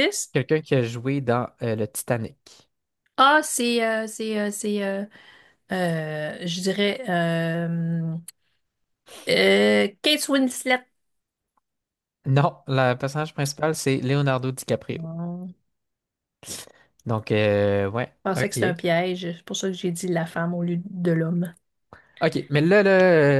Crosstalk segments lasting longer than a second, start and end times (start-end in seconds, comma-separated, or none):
none